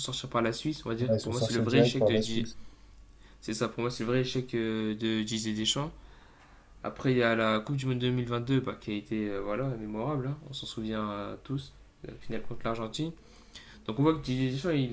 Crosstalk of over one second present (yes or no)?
yes